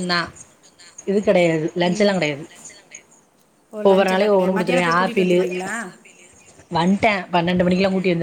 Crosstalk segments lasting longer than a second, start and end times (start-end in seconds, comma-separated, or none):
3.9-5.4